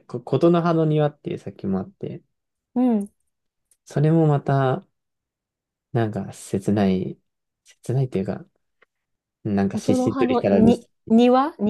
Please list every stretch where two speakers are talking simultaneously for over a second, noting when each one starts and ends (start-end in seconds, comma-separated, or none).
9.7-10.9